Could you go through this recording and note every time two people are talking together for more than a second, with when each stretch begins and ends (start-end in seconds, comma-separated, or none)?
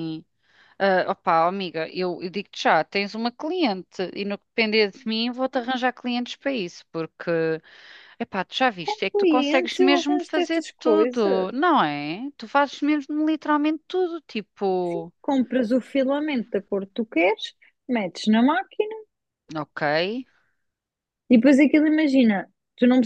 8.8-11.8